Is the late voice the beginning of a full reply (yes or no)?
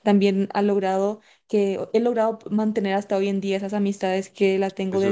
yes